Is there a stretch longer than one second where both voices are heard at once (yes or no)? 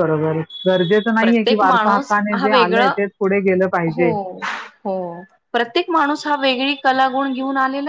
yes